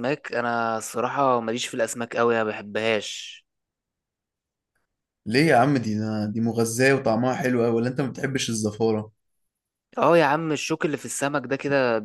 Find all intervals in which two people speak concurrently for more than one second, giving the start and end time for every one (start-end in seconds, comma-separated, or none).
none